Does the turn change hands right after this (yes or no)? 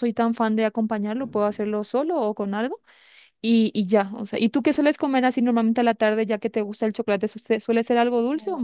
yes